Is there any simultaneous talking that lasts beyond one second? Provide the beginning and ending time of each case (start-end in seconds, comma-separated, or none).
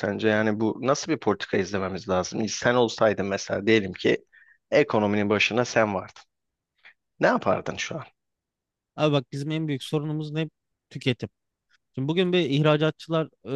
none